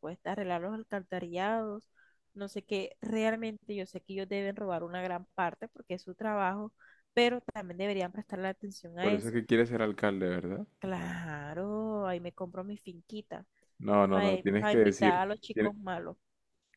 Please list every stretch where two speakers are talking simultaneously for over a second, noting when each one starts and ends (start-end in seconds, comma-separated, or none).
14.1-15.7